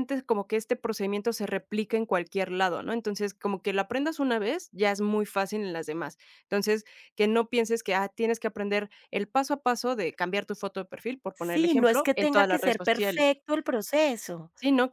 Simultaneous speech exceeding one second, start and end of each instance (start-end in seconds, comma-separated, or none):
11.3-13.2